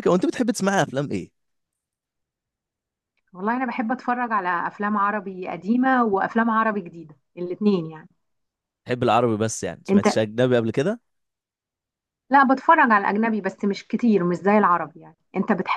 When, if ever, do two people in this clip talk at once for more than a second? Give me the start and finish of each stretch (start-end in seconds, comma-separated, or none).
none